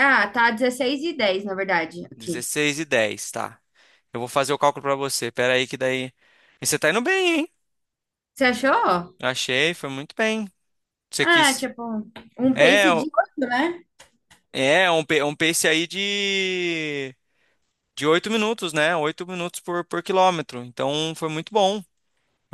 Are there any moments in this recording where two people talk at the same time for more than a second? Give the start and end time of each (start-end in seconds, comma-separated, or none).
none